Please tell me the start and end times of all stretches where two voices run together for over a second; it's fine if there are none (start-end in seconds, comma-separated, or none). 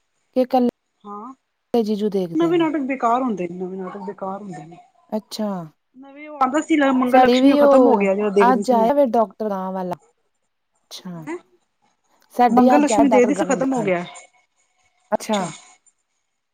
12.6-13.9